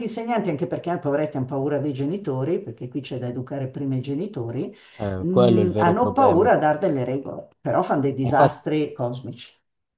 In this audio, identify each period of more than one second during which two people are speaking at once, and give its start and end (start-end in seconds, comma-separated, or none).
5.2-6.5